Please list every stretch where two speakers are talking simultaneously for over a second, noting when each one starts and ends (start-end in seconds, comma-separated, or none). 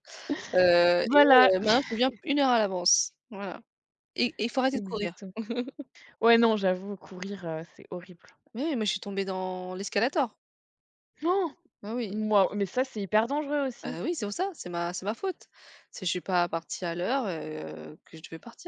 none